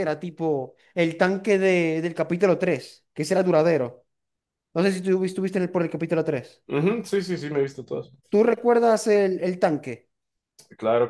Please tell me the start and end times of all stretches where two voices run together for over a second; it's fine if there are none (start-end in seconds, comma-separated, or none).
none